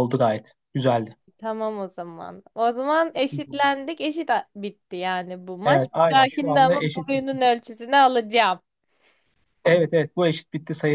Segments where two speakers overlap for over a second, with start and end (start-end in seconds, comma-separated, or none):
5.7-7.4